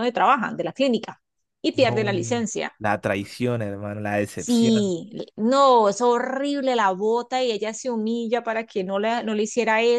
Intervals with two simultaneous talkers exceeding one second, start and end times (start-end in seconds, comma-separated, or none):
none